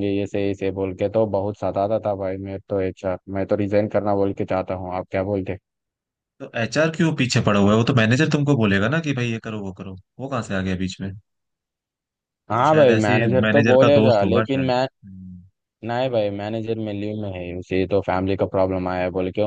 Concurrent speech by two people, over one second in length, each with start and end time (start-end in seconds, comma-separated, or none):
12.6-14.9